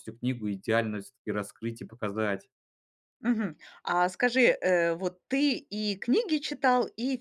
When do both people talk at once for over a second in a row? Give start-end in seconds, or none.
none